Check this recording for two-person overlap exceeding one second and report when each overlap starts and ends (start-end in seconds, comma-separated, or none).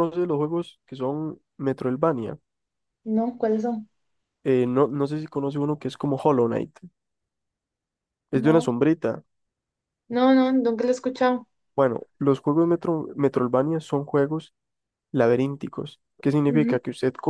none